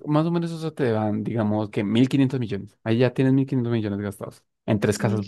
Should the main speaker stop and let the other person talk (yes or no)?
yes